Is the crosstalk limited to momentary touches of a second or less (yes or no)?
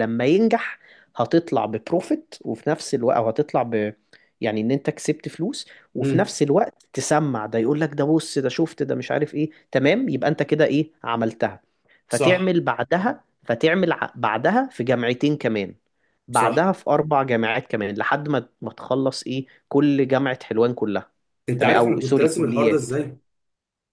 no